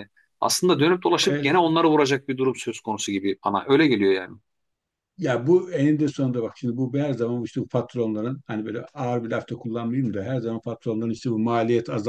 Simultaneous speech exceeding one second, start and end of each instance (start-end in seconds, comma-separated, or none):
none